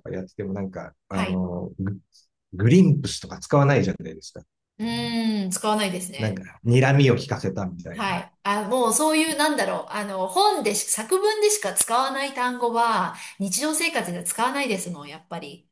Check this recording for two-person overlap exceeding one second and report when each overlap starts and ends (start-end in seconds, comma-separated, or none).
none